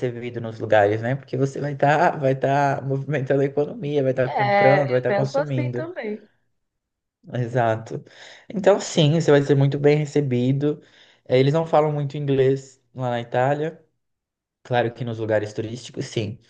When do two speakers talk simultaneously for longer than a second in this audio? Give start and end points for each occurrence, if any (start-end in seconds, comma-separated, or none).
4.2-5.9